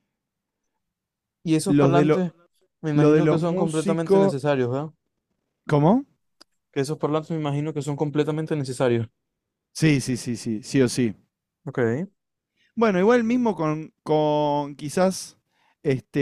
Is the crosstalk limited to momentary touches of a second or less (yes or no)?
no